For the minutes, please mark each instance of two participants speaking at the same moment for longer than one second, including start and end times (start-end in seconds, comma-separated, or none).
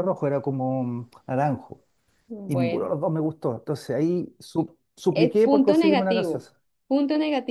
5.1-6.5